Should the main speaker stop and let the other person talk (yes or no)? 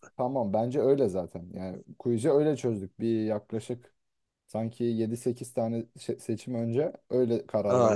yes